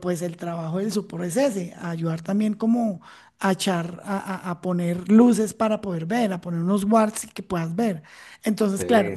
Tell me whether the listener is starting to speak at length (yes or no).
no